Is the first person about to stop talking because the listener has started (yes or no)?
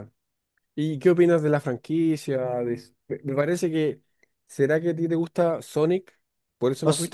yes